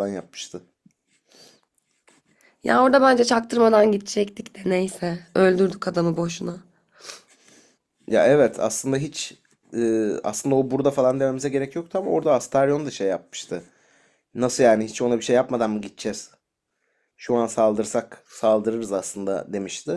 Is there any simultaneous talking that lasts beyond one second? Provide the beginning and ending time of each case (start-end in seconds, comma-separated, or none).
none